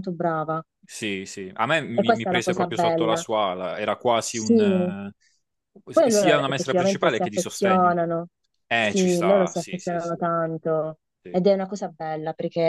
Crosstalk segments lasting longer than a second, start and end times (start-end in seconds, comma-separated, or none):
1.9-3.2, 5.9-7.9, 8.8-10.2